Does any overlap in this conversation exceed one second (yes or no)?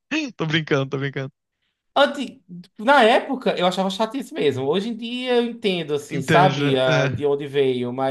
yes